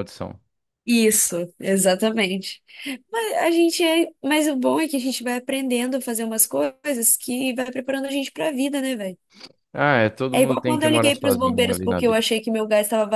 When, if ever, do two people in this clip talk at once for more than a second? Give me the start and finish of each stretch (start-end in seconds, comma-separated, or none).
10.3-12.2